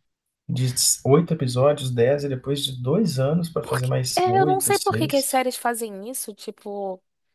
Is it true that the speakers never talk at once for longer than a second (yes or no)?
no